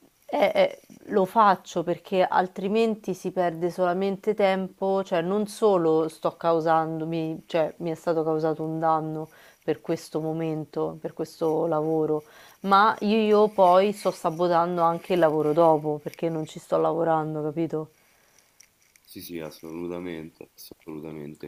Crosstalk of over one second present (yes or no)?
no